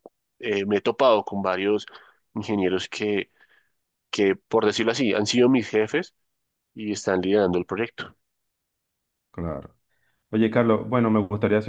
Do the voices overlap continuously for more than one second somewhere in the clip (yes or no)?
no